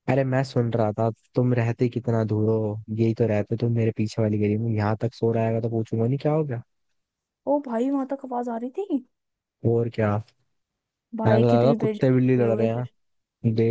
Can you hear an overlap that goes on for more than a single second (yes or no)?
yes